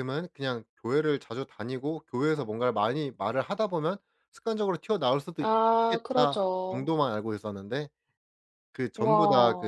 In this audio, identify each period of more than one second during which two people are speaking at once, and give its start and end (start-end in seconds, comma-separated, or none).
5.4-6.9